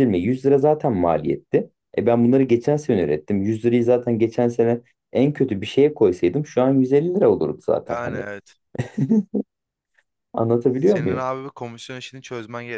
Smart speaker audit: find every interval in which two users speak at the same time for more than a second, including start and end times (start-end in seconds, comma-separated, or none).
none